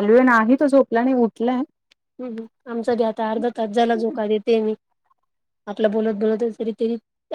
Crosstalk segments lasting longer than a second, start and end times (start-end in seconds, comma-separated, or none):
none